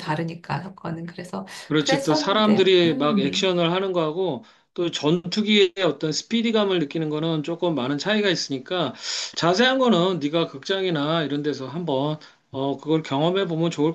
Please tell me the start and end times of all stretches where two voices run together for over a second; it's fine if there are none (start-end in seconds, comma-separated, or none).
1.7-3.5